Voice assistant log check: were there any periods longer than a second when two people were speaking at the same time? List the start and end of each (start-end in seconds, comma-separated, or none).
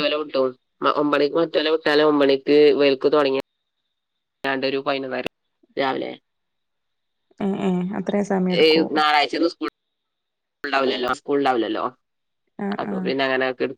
none